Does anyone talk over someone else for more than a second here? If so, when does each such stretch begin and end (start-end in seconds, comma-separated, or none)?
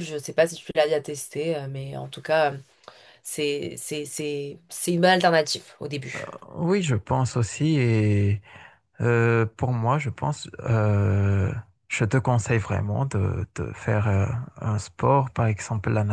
none